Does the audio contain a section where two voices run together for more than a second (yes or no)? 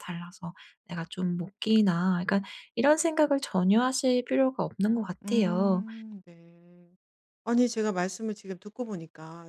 no